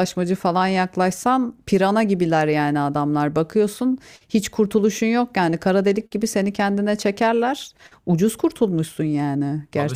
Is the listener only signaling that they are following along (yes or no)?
no